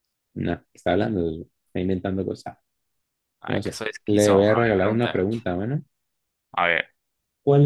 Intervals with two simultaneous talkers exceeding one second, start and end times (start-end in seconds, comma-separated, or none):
3.5-5.2